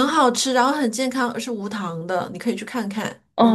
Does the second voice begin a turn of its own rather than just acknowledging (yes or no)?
yes